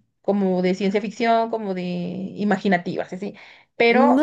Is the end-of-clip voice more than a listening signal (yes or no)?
yes